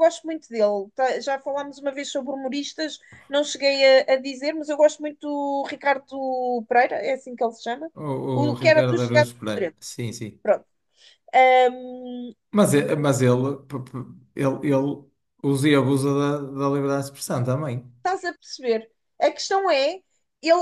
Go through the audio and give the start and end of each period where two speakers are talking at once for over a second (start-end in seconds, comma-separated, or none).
8.3-9.8